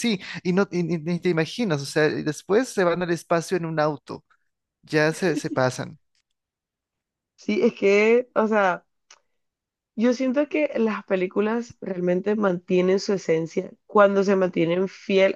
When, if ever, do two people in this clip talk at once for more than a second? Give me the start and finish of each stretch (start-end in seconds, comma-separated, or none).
none